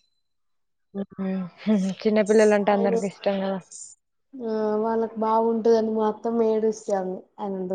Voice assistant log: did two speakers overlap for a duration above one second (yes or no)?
no